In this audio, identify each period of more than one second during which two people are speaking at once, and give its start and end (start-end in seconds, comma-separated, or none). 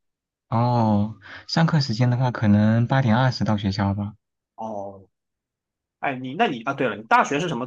none